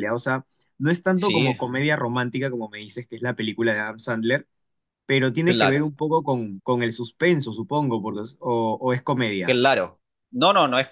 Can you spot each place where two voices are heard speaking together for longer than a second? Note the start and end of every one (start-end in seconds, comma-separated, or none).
none